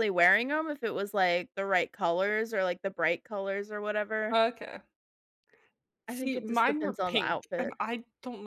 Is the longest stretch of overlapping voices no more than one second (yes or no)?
no